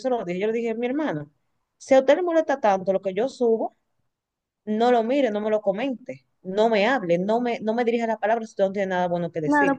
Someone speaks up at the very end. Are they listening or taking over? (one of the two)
taking over